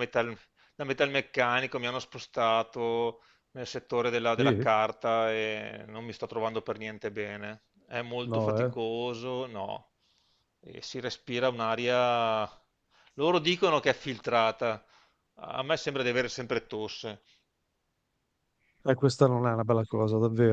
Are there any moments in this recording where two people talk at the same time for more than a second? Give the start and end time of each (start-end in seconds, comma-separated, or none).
none